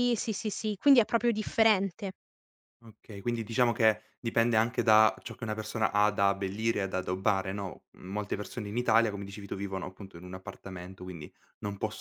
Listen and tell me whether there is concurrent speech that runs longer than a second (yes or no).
no